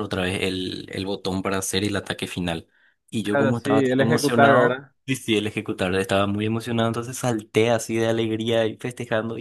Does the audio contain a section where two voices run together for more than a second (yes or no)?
yes